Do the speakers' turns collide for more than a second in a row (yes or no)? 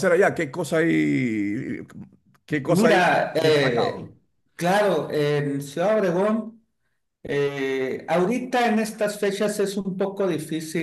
yes